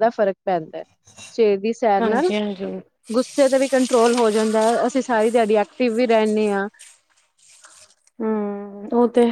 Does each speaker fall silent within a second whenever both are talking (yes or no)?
yes